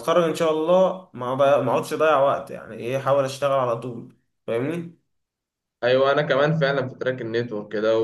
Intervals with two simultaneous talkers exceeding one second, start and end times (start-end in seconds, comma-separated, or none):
none